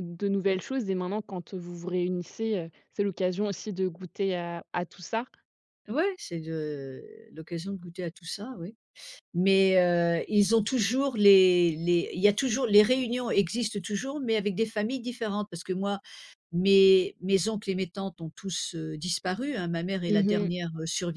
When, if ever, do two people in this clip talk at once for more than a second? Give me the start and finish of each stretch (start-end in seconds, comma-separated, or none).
none